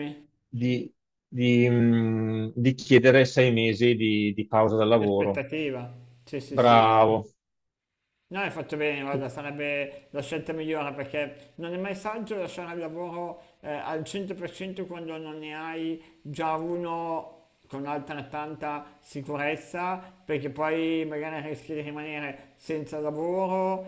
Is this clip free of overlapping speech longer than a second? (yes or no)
yes